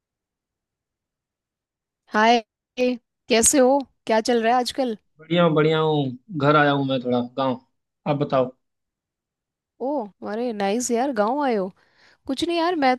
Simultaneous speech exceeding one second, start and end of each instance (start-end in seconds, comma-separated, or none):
none